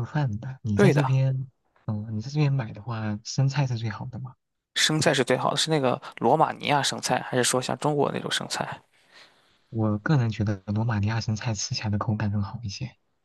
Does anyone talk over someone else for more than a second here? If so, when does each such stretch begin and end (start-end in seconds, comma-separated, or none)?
none